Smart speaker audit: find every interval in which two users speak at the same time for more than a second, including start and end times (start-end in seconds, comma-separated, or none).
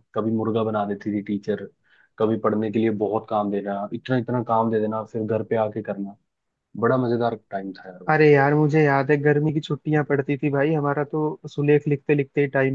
none